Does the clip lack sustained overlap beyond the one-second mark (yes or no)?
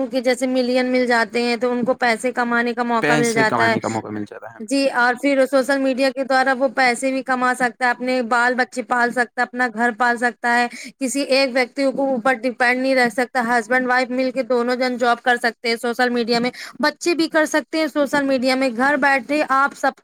no